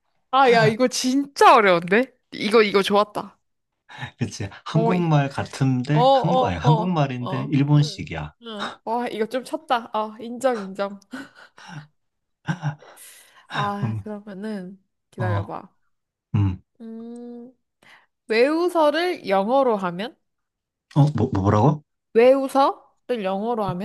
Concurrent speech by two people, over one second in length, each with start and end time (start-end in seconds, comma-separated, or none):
5.9-8.3